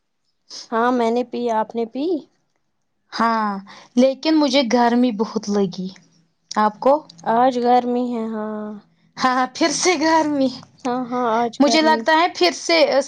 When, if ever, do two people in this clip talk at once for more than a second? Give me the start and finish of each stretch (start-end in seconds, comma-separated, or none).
none